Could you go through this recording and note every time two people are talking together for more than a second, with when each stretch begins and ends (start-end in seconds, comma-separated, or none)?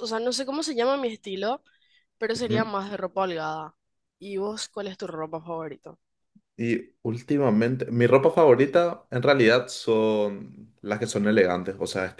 none